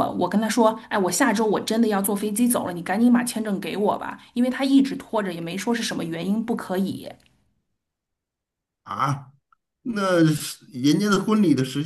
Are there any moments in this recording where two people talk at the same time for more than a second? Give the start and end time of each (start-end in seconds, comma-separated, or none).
none